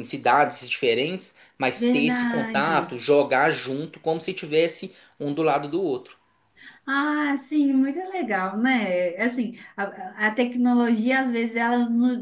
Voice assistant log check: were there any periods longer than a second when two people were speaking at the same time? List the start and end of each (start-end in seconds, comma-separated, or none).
1.8-3.0